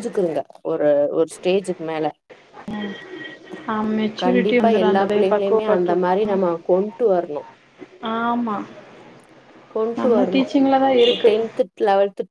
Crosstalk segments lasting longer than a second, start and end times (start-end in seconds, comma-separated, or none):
4.2-6.4